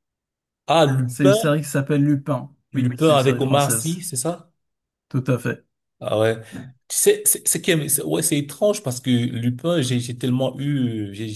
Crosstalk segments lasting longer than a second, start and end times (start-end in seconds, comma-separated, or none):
2.7-4.0